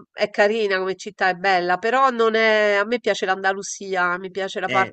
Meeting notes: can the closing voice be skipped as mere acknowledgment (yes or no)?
yes